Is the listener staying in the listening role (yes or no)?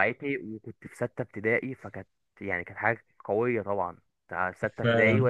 yes